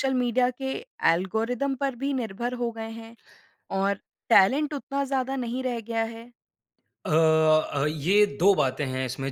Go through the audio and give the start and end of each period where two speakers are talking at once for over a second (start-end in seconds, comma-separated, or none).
none